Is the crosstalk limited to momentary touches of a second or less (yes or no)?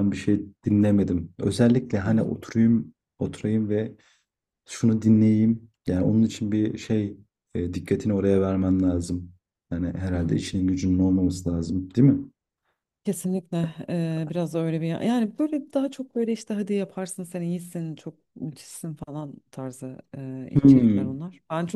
yes